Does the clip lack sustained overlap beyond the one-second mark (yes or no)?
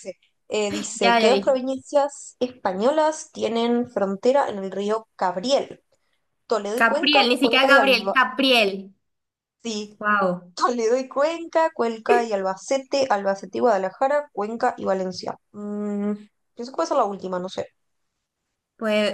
no